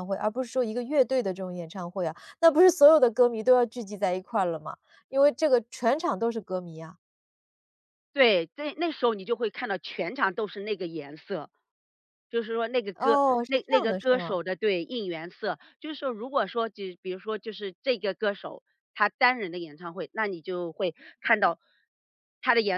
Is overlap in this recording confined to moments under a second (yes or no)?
no